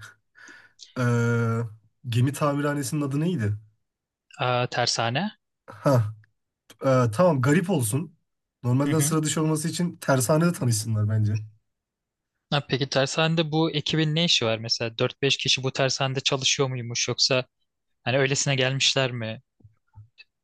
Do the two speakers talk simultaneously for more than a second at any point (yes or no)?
no